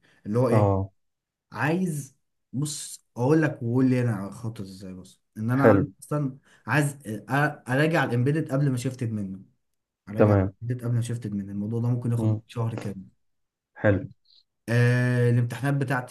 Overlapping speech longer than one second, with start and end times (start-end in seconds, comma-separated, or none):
none